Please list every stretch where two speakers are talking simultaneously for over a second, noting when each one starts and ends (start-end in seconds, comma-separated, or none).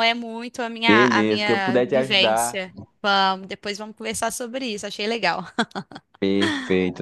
0.9-2.6